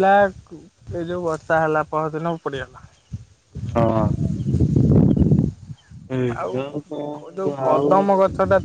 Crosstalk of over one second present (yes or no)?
yes